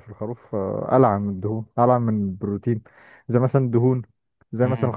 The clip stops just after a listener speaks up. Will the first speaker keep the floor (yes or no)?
yes